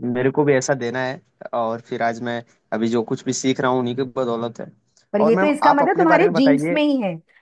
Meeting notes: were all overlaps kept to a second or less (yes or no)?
no